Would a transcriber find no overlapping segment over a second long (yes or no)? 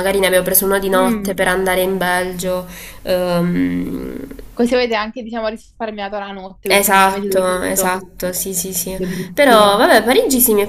no